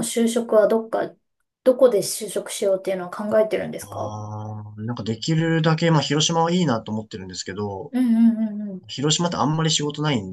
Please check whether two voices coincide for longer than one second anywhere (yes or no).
no